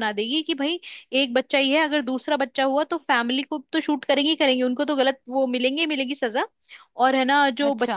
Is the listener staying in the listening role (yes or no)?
yes